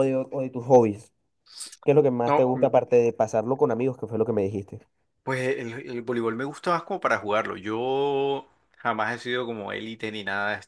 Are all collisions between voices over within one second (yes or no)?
yes